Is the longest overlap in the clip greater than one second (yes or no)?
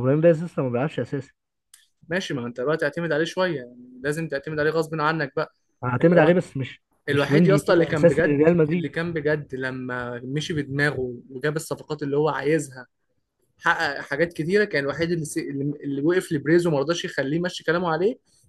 yes